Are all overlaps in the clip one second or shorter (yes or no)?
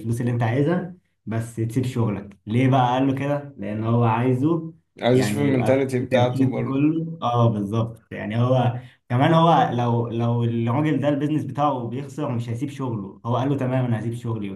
no